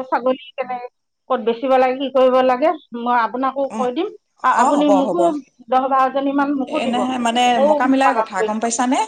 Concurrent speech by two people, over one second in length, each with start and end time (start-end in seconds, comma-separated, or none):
none